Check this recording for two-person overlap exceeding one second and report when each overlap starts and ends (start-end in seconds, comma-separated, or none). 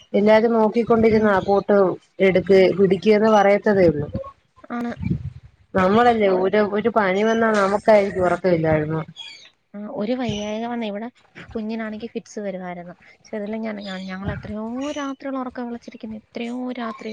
none